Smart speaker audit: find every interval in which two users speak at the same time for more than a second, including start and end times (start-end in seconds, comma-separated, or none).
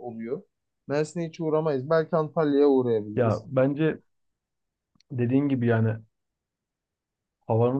none